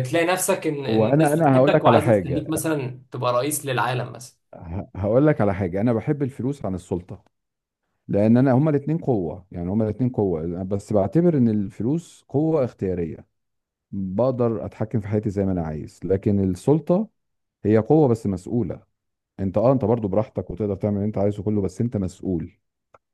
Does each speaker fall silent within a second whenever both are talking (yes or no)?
no